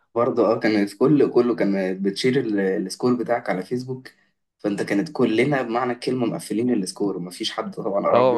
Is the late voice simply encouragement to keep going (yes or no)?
no